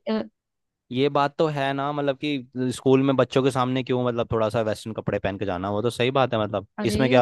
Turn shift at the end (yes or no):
yes